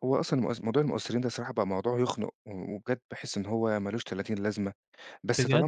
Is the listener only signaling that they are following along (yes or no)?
yes